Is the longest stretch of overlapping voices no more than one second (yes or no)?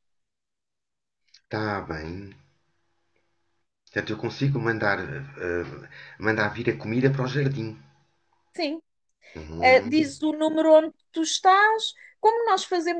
yes